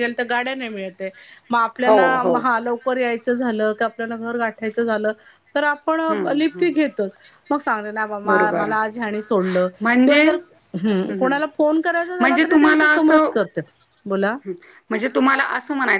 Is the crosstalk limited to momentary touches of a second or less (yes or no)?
no